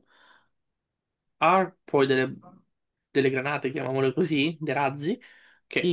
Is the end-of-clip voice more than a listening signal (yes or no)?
yes